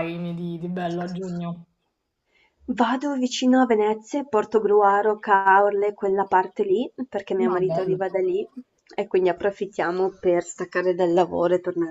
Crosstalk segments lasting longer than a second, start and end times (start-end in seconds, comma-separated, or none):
none